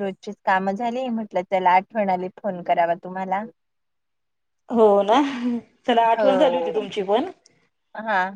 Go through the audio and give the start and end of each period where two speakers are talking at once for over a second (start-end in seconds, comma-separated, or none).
none